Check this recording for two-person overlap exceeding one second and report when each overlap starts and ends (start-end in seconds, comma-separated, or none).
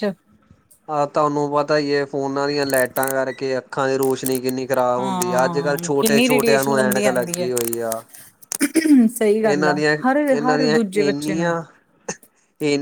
5.0-7.5, 9.4-11.5